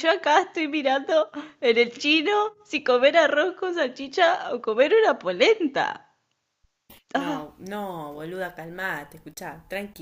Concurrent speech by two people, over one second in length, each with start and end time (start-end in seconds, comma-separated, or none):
none